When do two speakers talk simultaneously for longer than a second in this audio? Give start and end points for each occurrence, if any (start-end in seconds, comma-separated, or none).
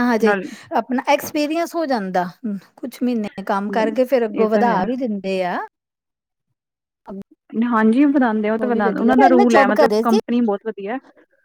8.6-10.2